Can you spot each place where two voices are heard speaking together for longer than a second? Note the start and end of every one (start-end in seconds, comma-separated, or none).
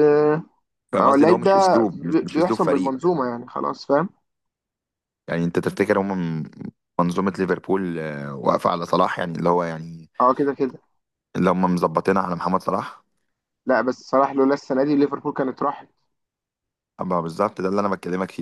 1.0-3.0